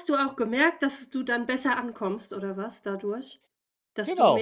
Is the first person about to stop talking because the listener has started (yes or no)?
yes